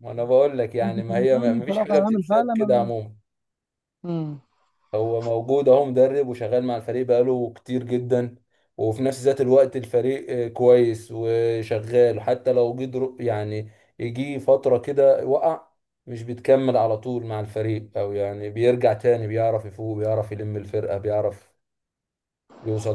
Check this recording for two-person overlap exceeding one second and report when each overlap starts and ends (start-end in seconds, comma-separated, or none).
0.8-2.9